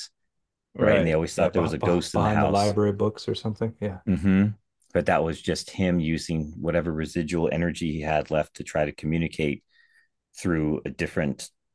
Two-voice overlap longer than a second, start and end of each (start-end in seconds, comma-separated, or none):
0.8-2.7